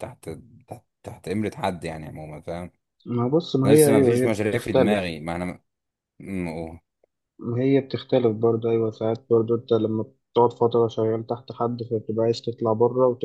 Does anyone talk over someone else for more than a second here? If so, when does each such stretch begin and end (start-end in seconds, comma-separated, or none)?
3.6-5.2